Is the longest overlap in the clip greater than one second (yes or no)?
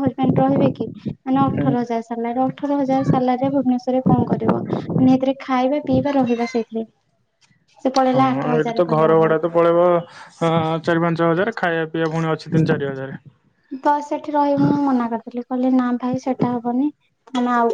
no